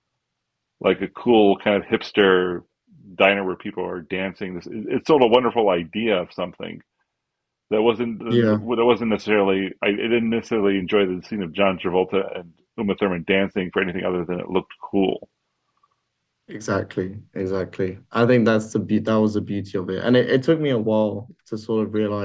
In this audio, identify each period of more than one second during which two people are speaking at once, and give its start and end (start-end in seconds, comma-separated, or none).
none